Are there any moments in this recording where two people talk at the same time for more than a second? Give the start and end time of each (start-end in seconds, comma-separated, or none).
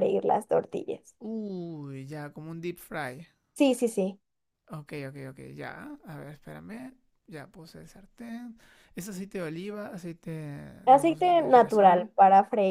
10.8-12.1